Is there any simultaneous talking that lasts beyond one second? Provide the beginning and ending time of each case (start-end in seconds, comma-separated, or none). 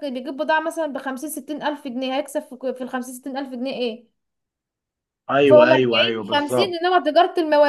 5.5-6.8